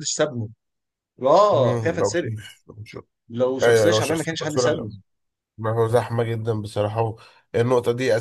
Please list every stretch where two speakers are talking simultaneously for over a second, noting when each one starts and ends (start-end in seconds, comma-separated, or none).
3.6-4.9